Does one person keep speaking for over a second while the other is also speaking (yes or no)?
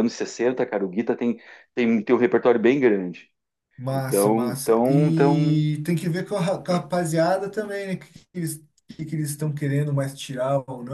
yes